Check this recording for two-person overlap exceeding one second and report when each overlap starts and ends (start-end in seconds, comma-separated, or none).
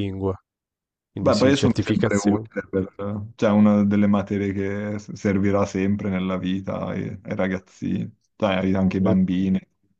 1.2-2.5